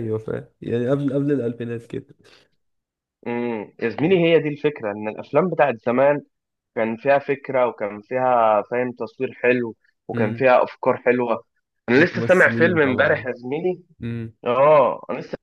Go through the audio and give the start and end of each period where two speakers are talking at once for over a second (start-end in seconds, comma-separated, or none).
11.9-13.3